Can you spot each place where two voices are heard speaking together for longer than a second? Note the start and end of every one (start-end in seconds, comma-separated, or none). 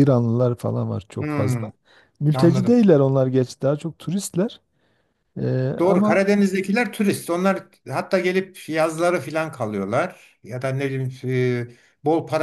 none